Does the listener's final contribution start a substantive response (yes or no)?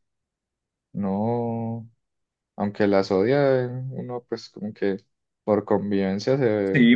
yes